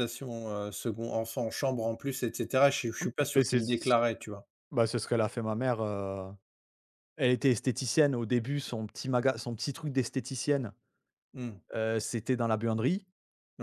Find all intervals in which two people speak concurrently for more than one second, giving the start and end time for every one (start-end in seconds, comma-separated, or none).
none